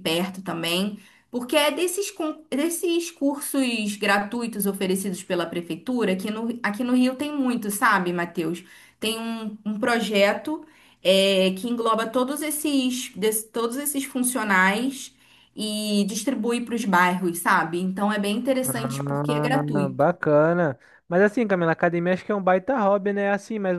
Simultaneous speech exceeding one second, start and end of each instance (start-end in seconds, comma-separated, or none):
18.6-20.1